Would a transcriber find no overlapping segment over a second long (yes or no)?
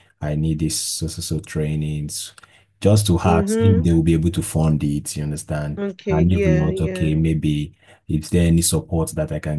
no